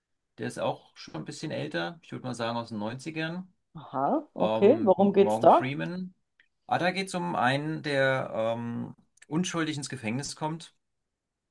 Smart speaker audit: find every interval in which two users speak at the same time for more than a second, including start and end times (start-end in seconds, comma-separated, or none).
4.4-5.7